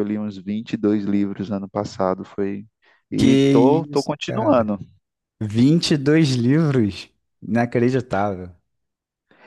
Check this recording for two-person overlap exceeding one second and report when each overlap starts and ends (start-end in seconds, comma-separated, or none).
3.2-4.7